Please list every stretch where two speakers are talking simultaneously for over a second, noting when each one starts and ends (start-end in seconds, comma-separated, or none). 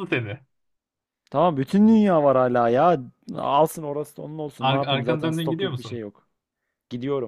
4.6-6.0